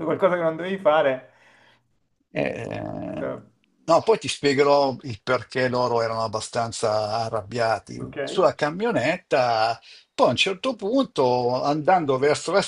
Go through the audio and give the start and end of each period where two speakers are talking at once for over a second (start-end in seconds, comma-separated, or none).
none